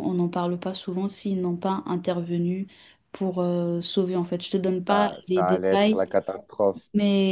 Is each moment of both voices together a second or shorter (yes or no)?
no